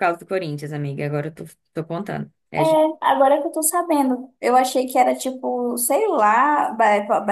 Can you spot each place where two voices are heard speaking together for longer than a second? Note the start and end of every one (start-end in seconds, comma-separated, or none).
none